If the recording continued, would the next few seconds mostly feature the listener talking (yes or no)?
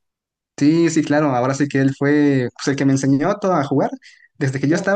no